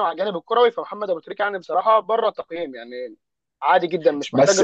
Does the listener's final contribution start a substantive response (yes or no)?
yes